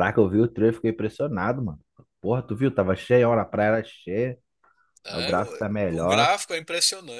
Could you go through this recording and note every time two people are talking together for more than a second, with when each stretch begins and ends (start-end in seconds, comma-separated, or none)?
5.1-6.3